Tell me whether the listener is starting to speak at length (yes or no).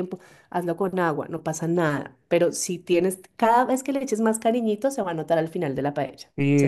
yes